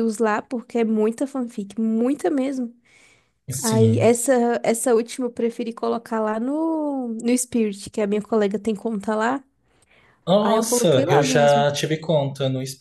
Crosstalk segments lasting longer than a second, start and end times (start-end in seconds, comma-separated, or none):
10.4-11.7